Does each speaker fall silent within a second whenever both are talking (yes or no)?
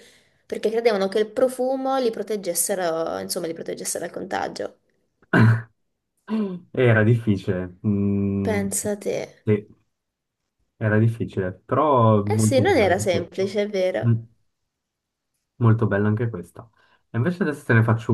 no